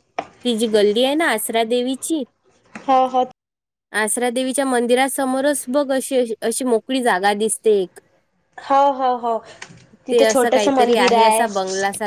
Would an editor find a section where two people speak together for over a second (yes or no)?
yes